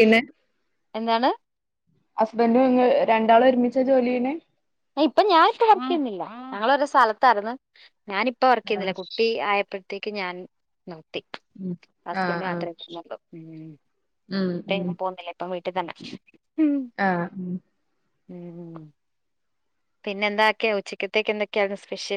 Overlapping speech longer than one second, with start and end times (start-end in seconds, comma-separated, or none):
none